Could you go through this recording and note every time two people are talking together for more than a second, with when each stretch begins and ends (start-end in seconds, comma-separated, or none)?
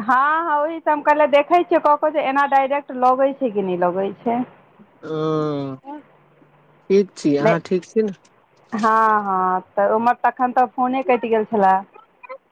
none